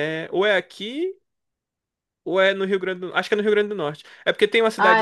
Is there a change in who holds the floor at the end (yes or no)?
no